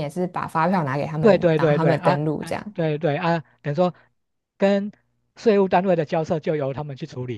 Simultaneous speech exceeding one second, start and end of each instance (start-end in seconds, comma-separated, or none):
1.2-2.8